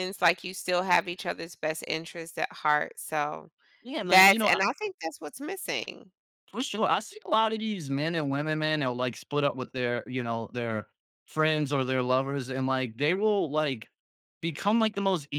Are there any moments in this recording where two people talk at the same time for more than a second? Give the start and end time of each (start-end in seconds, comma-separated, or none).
none